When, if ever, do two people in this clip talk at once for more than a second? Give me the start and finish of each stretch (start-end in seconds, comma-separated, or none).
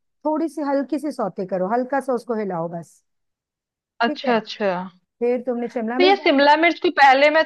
none